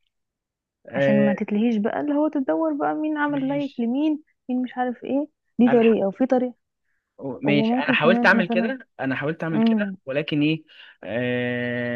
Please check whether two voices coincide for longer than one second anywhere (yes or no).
yes